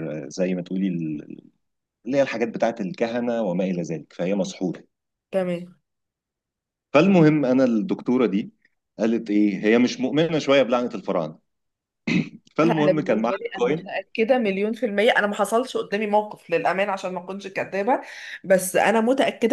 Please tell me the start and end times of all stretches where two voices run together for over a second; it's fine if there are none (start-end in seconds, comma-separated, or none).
12.6-13.9